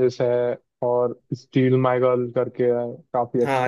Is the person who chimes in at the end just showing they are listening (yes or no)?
no